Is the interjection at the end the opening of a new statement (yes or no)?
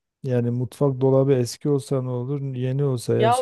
yes